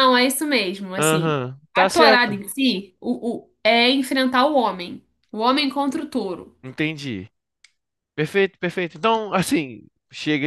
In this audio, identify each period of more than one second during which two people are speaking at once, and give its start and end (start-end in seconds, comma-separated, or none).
0.9-2.4